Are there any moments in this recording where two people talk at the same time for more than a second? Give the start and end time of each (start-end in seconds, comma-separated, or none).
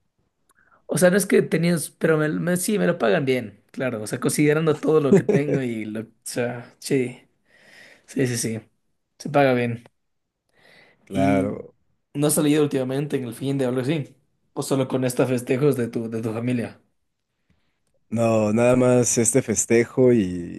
none